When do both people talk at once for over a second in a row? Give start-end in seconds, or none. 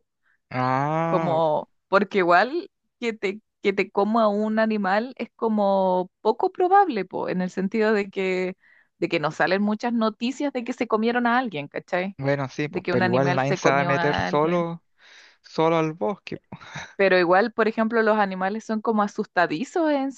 12.7-14.7